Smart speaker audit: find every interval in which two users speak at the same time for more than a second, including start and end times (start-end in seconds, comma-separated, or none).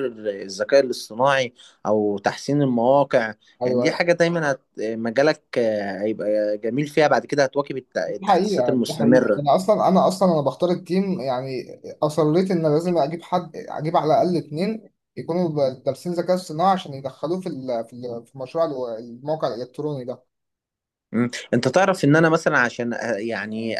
8.1-9.6